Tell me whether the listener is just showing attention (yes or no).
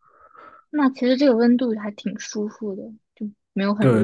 no